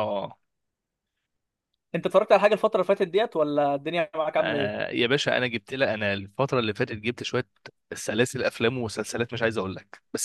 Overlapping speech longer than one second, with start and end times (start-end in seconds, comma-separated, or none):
none